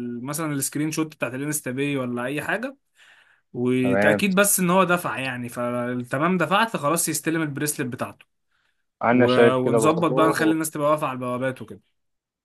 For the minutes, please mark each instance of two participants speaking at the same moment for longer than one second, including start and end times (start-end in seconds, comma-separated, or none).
9.1-10.3